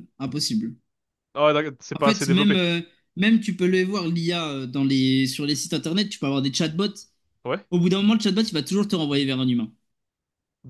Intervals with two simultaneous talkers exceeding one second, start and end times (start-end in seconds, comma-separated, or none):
none